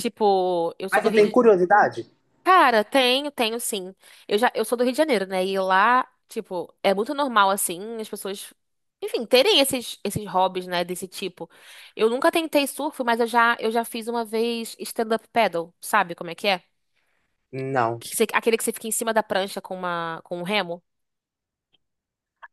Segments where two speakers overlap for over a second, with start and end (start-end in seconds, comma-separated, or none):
none